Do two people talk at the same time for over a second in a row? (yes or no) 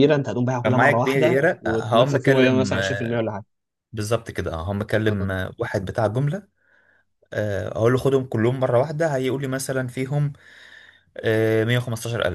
yes